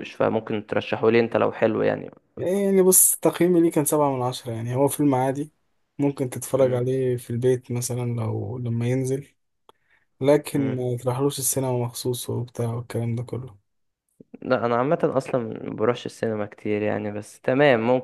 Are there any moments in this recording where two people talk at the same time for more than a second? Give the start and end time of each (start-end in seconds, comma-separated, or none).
none